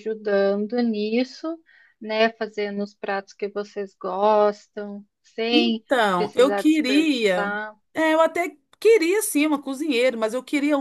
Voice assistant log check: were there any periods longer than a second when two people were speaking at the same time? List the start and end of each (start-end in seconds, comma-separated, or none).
5.5-7.5